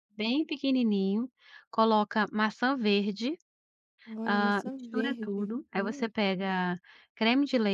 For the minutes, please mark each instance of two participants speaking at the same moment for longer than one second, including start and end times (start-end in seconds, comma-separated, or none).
4.3-6.1